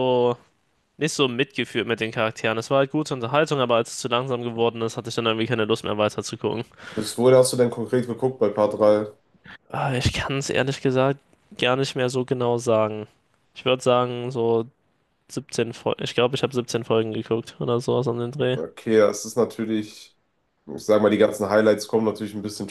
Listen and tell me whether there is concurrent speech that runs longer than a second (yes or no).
no